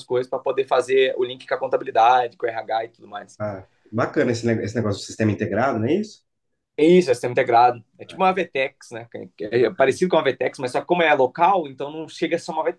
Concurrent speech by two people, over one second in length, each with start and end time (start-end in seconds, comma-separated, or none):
none